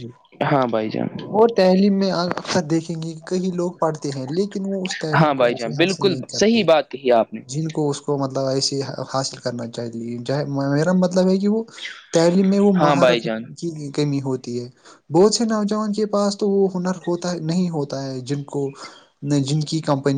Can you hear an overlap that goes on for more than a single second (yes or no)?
yes